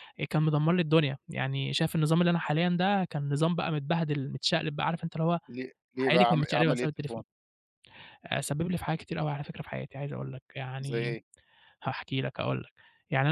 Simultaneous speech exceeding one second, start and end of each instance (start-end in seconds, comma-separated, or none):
6.0-7.2